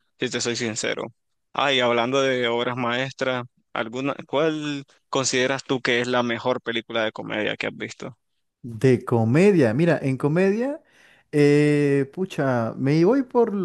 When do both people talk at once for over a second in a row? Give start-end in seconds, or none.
none